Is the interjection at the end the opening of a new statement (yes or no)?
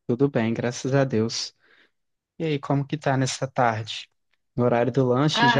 no